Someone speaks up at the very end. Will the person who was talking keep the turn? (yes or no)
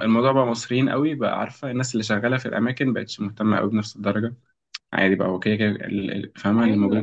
no